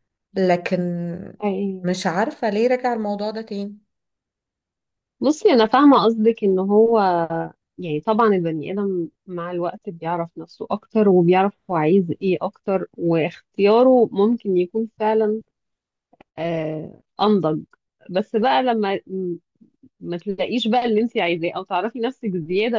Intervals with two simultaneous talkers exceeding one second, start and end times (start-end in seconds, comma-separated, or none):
none